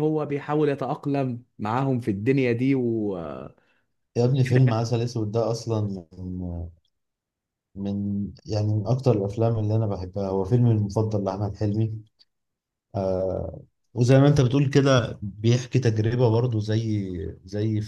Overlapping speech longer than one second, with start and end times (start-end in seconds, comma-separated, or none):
none